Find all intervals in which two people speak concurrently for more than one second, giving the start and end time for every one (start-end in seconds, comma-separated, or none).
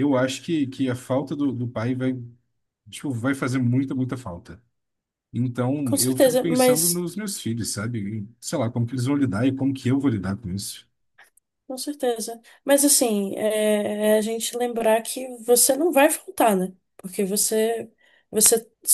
5.8-7.0